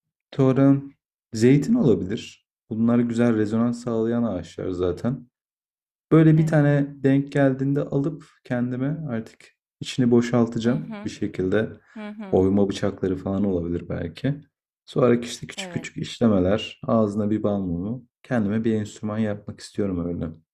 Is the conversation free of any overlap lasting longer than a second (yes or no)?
yes